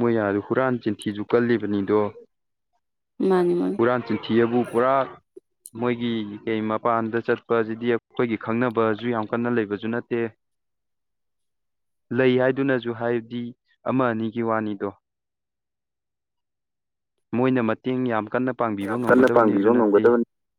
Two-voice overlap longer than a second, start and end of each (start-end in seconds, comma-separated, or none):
18.8-20.0